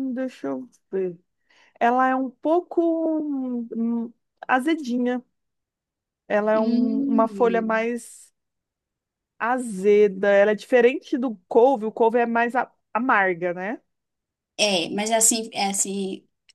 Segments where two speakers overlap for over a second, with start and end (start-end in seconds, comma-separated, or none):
6.5-7.9